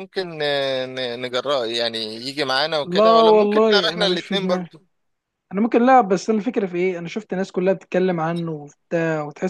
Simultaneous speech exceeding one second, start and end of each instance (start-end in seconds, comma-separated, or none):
2.8-4.7